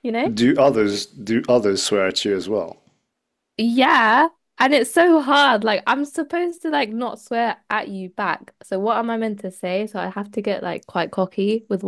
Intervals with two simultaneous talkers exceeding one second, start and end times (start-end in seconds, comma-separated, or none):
none